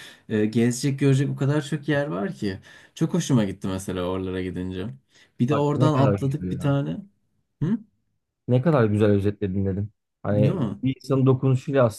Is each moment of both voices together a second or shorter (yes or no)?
no